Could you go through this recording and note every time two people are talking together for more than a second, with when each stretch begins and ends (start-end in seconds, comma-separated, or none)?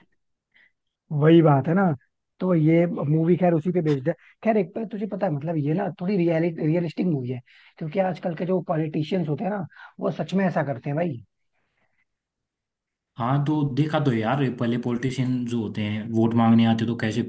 none